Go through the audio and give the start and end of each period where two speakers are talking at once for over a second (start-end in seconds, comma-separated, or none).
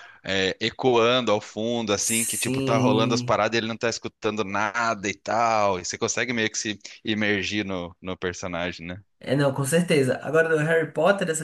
2.0-3.4